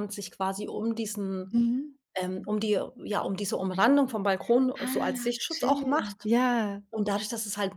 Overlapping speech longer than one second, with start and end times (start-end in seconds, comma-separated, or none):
4.8-6.3